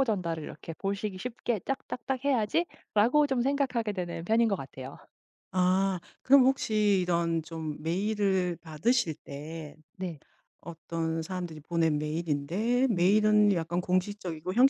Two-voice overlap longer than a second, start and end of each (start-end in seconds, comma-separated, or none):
none